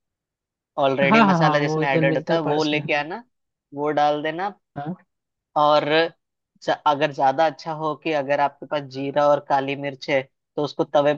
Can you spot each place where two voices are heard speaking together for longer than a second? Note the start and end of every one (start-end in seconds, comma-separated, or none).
1.1-3.0